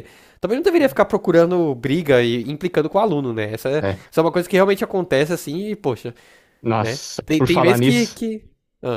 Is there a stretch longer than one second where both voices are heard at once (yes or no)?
yes